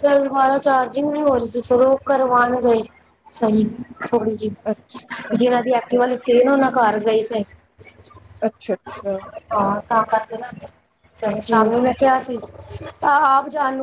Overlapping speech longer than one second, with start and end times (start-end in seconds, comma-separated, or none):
4.7-6.0